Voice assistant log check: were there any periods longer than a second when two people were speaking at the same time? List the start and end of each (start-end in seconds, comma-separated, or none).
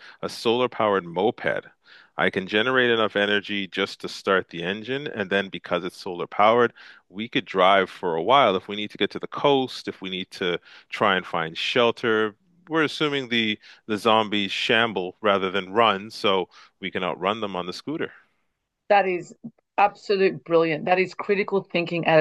none